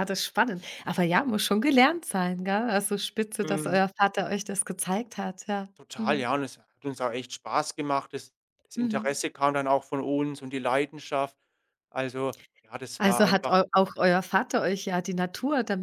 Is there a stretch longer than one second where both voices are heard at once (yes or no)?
no